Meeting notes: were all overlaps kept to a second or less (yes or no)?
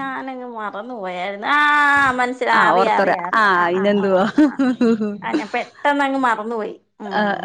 no